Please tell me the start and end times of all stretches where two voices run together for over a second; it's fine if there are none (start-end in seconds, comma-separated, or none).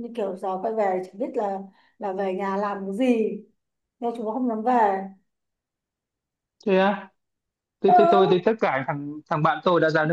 none